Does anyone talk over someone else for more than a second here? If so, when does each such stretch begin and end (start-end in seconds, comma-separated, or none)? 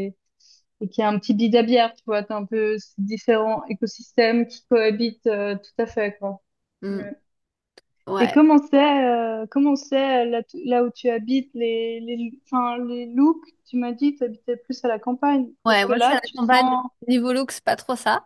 15.7-16.9